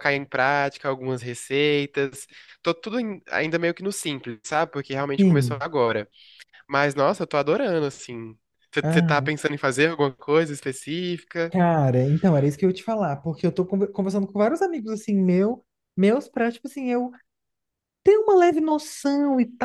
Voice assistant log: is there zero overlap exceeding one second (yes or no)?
yes